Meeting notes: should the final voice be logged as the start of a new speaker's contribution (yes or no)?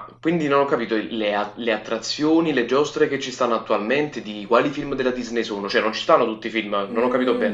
yes